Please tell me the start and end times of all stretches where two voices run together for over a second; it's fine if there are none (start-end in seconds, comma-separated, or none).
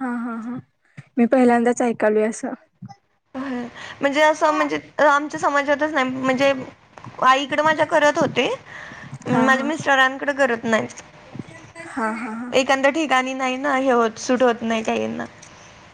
none